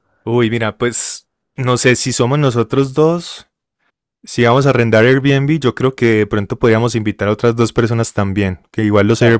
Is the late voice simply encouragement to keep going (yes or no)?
yes